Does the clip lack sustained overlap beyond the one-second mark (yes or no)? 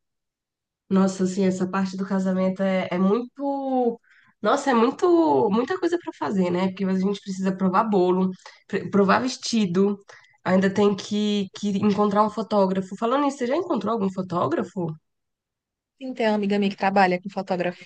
yes